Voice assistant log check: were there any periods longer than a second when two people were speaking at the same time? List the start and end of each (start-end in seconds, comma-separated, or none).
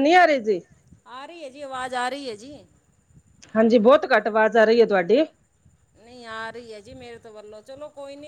none